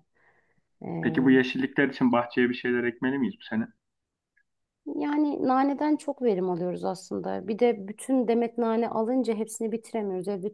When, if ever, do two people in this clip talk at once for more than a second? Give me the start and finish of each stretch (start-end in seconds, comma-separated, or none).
none